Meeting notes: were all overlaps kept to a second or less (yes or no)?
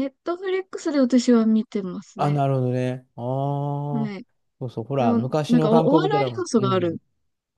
no